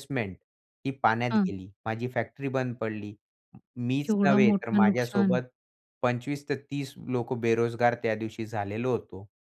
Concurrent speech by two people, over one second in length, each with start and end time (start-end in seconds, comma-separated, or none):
4.0-5.4